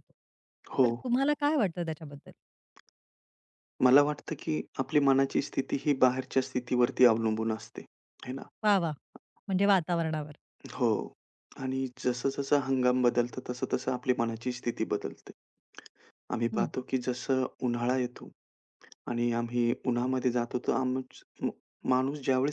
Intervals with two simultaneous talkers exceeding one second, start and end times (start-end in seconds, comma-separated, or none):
none